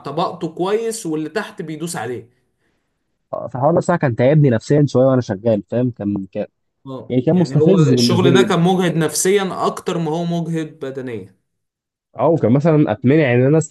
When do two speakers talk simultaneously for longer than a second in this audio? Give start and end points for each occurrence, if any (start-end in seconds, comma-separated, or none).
7.1-8.6